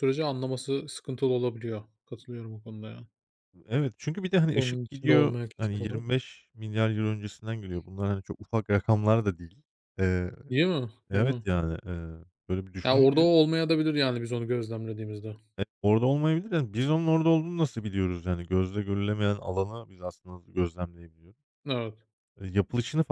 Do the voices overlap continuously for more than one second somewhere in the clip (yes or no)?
yes